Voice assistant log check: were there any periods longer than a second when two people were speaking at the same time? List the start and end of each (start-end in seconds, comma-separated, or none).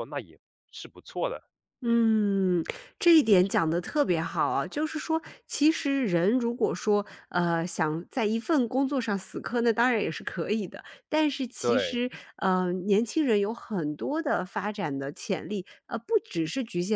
none